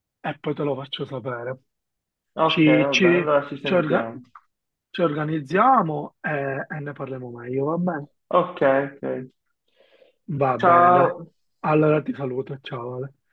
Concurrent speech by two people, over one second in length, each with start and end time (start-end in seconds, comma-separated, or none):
2.4-4.1